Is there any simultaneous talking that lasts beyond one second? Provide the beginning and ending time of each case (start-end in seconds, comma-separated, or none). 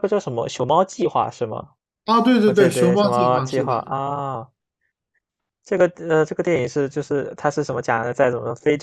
2.4-3.7